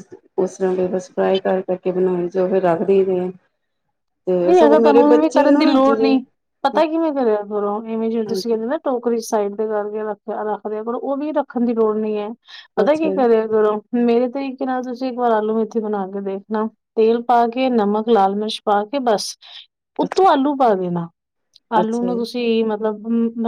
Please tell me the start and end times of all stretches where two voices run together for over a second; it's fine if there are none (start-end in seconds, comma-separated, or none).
4.5-6.2